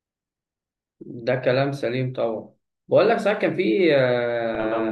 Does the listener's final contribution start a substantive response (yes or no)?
no